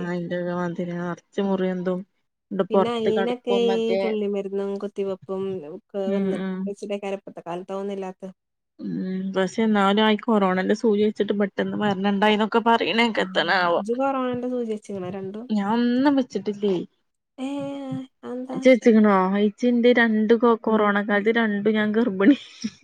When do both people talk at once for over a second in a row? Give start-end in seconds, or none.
none